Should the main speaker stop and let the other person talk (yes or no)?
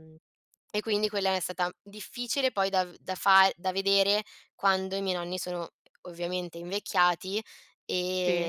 no